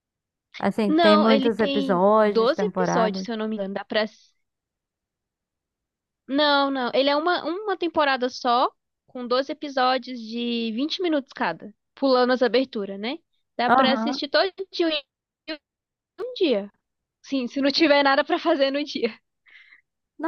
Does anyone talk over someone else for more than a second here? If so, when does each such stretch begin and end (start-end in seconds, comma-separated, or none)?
0.9-3.3